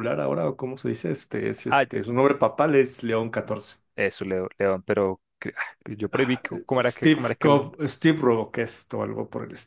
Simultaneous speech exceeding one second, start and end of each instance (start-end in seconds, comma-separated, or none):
6.1-7.7